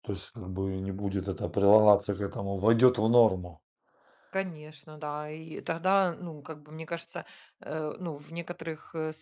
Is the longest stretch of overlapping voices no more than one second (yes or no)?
yes